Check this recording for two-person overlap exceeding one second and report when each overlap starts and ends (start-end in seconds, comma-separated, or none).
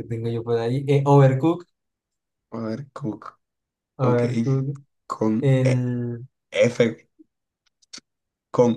none